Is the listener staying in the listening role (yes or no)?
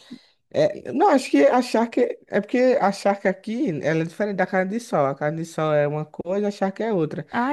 yes